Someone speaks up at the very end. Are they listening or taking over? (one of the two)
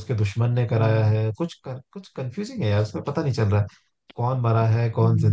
taking over